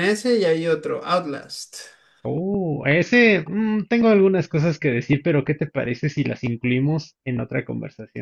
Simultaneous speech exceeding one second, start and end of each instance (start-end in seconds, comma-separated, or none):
none